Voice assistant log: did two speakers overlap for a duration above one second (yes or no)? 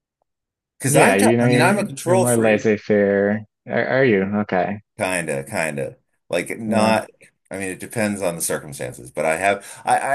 yes